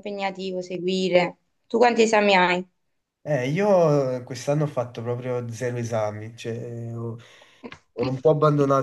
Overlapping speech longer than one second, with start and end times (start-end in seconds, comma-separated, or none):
none